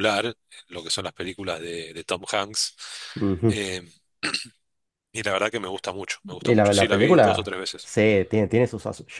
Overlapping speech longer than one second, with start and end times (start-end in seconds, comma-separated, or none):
6.4-7.9